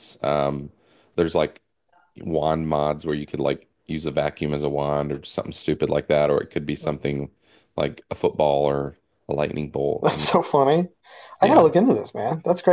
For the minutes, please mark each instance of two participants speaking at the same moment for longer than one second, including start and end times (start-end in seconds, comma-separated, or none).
none